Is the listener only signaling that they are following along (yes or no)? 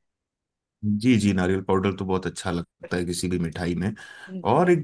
yes